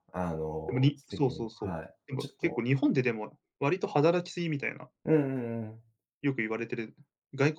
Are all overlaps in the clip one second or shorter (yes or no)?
no